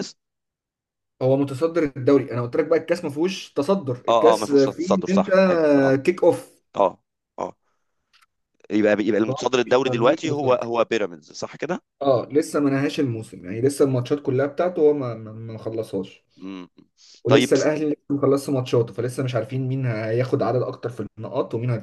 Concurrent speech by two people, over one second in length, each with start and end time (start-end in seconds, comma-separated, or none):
4.1-5.3, 9.3-10.7